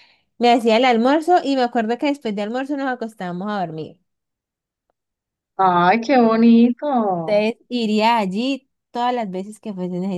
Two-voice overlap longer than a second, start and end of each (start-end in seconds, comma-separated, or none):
none